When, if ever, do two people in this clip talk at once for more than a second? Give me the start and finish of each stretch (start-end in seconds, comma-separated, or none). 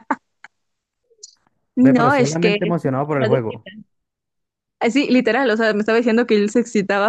1.8-3.7